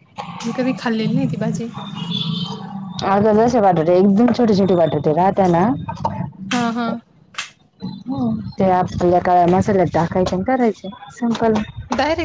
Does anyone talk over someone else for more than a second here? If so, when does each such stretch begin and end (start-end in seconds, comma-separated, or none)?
none